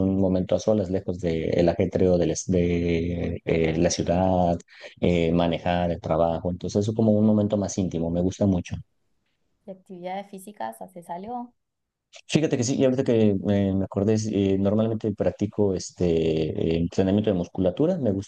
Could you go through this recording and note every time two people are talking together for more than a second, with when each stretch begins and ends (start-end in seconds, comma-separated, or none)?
none